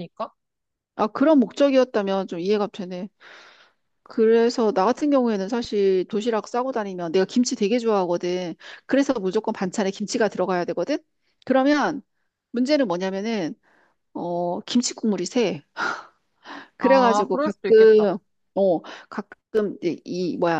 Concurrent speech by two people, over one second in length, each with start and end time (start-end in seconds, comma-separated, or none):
16.8-18.0